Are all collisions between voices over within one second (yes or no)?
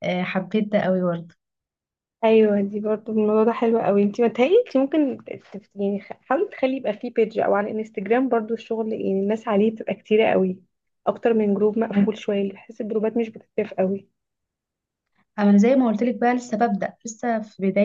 yes